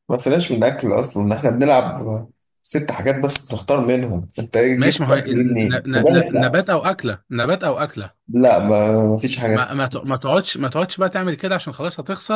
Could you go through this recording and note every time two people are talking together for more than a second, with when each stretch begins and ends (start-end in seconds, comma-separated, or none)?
4.8-6.6